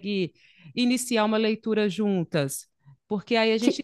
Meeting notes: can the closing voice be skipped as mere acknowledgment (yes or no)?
yes